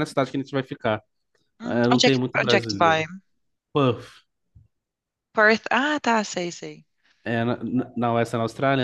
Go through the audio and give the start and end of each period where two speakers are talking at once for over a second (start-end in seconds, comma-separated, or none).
1.6-3.0